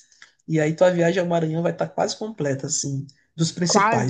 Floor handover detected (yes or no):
no